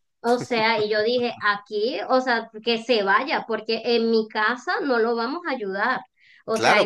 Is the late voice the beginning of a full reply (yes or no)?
yes